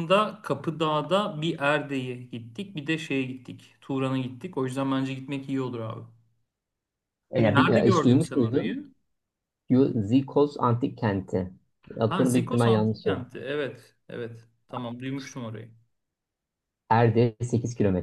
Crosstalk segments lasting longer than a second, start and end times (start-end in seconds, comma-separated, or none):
7.4-8.8, 12.1-13.3